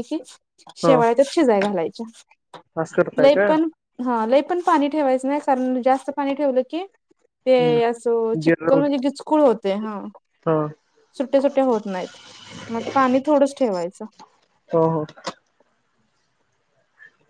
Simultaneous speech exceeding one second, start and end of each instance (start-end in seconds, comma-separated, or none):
7.5-8.8